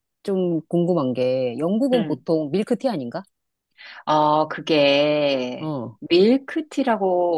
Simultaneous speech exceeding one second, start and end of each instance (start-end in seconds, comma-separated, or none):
none